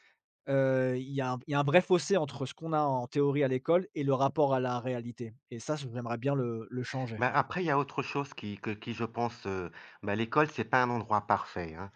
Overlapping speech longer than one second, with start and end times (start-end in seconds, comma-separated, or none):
none